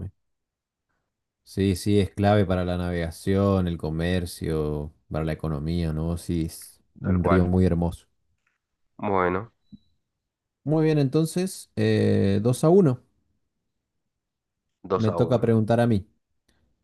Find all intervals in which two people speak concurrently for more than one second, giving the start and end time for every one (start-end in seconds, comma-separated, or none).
none